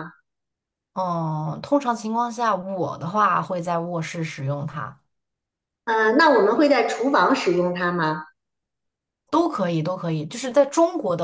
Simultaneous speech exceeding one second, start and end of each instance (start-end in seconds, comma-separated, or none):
none